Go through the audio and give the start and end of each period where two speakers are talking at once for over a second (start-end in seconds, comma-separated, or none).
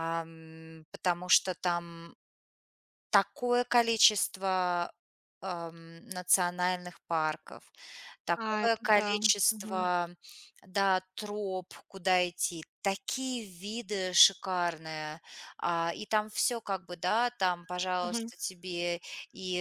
8.3-9.9